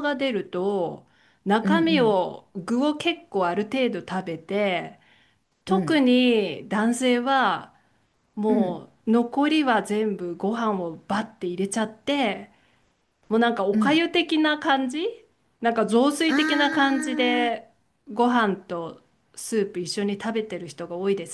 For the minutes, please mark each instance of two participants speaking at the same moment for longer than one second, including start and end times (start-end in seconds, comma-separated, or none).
16.3-17.5